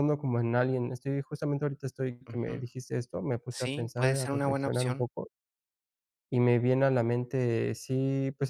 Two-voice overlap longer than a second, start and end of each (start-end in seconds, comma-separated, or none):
3.5-5.1